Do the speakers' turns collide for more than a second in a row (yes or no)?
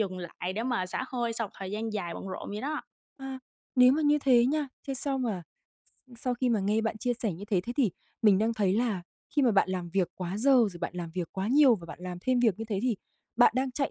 no